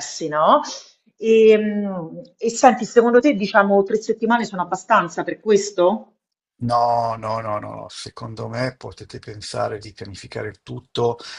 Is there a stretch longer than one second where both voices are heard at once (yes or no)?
no